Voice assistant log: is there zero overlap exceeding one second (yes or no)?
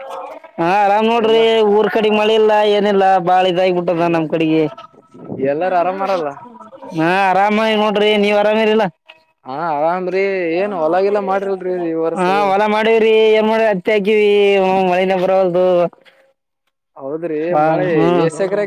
yes